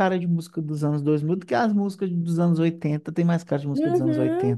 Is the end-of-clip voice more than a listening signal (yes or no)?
yes